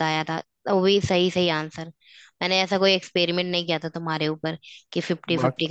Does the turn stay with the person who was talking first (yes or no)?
yes